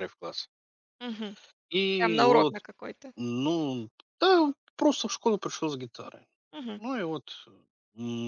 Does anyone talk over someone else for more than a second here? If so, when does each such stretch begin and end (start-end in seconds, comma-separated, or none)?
none